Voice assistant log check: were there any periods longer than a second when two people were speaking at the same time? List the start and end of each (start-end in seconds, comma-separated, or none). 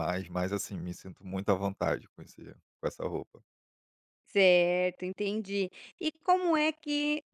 none